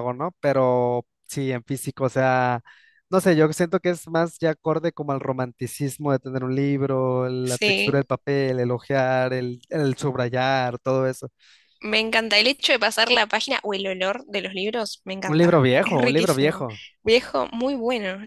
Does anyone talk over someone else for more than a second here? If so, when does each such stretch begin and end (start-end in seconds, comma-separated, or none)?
15.3-16.7